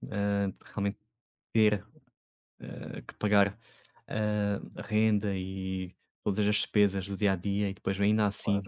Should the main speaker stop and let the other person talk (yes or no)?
no